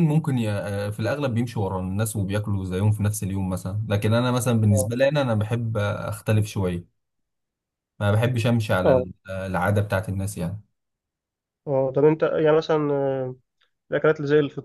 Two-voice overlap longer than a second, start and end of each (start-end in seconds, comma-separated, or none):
none